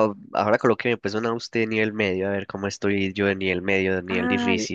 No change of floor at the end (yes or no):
no